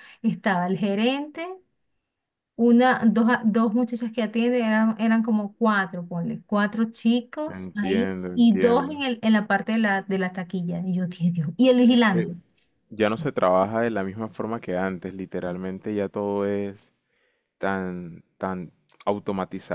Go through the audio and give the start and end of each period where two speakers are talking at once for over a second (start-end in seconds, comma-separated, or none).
7.5-9.0